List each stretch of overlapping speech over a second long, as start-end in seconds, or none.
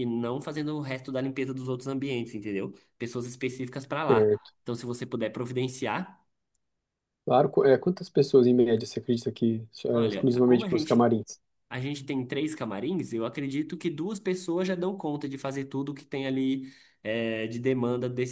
9.9-11.1